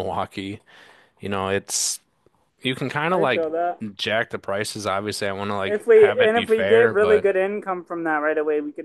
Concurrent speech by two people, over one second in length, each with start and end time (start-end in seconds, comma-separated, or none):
5.7-7.2